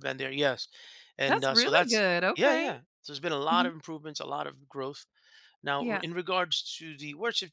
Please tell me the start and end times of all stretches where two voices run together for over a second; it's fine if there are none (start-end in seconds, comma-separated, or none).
1.3-2.7